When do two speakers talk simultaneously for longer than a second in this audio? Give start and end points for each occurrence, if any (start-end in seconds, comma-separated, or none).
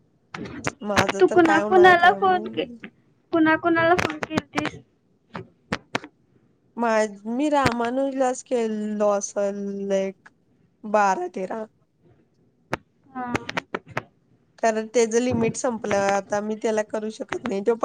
1.2-2.8